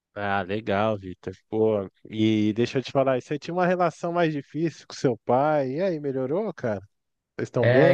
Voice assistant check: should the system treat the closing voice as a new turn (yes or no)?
yes